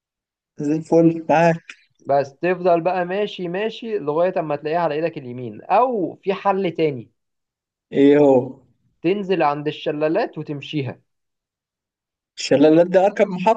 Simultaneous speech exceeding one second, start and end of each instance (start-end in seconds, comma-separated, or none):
none